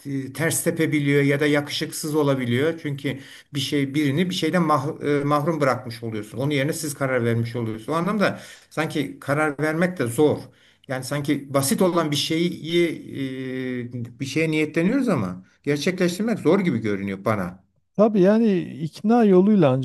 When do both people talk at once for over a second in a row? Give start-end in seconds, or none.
none